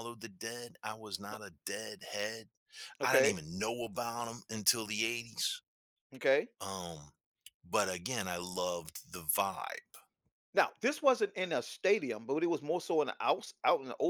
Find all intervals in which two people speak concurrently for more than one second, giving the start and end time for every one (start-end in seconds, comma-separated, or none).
none